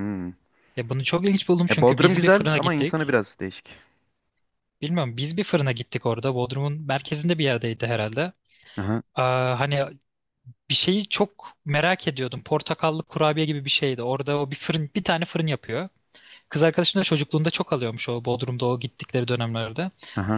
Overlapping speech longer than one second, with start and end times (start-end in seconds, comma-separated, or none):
1.7-3.1